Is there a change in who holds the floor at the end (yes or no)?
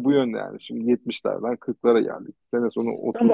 yes